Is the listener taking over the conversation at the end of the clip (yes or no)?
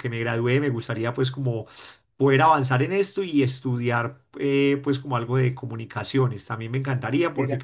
no